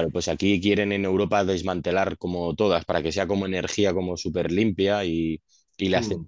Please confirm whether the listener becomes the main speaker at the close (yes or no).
no